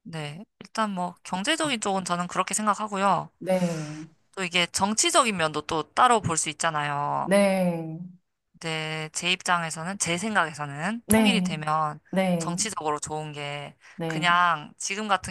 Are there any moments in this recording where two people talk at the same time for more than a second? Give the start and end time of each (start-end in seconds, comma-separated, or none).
none